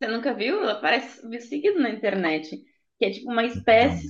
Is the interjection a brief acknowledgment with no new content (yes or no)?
yes